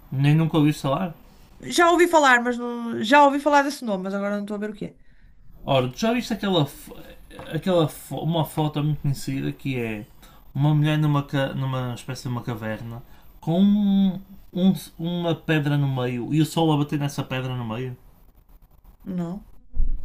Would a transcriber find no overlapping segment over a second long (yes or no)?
yes